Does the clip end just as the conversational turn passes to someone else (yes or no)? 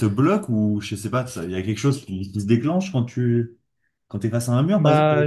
yes